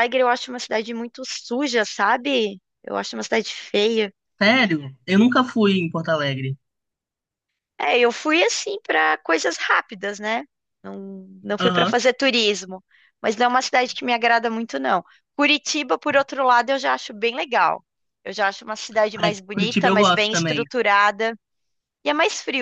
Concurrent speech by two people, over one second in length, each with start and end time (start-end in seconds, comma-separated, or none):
19.1-20.6